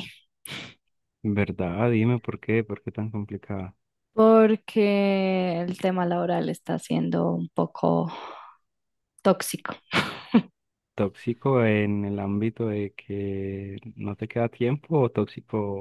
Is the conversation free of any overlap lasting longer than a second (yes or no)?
yes